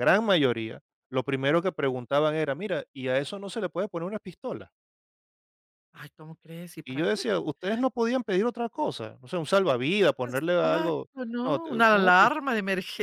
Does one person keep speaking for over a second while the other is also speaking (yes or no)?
yes